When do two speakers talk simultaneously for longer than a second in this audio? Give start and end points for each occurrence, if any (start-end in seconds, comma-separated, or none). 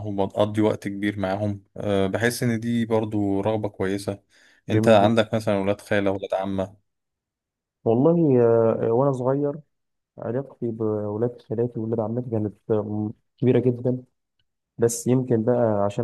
none